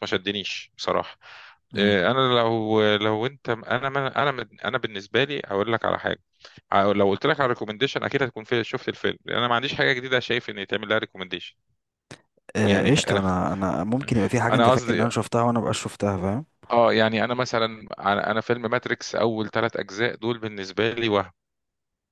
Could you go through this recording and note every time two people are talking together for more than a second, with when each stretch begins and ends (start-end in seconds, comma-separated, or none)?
none